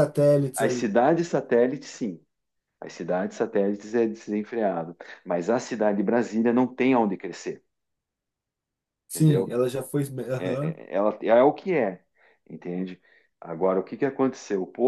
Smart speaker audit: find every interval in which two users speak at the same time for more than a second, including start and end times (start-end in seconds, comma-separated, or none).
none